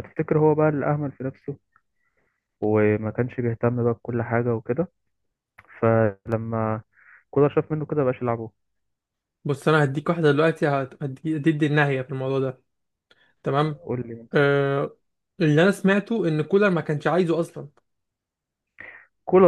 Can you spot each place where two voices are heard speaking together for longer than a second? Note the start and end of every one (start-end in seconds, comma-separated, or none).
none